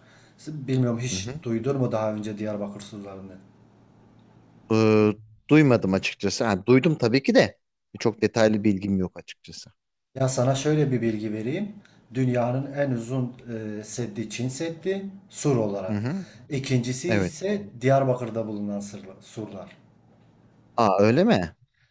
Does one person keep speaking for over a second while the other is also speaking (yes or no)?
no